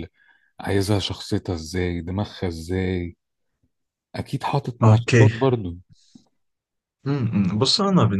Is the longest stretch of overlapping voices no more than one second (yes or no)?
yes